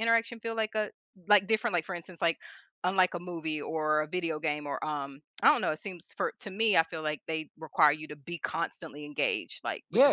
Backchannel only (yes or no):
no